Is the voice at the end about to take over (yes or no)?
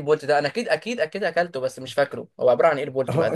yes